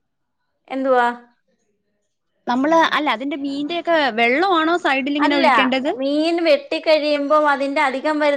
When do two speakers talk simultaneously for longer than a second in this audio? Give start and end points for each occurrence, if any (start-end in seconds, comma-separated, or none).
none